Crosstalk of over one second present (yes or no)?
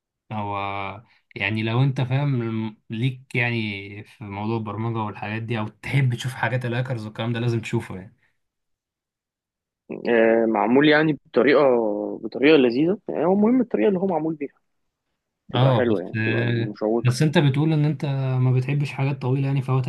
yes